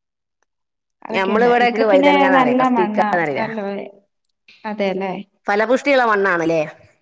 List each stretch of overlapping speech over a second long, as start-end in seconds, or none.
1.1-3.5